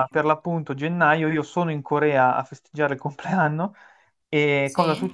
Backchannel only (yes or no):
yes